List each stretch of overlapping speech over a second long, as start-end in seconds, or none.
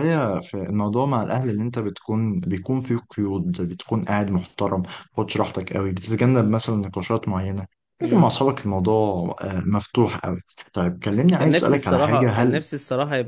11.4-12.6